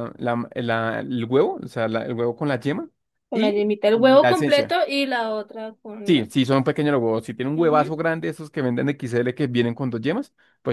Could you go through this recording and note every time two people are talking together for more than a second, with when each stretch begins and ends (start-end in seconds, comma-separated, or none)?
3.3-4.8